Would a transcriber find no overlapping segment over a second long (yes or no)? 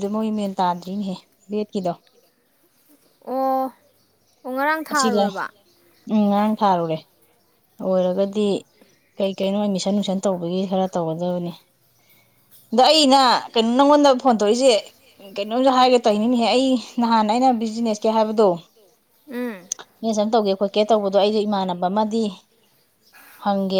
yes